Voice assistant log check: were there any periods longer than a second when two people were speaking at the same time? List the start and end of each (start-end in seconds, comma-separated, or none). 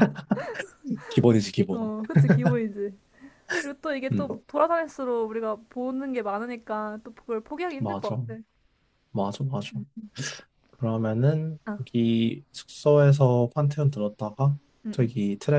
none